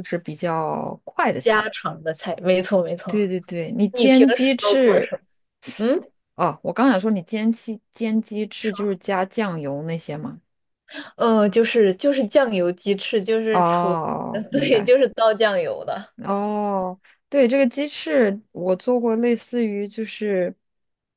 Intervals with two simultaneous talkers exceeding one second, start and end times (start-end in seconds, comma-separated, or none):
3.9-5.2, 13.5-14.9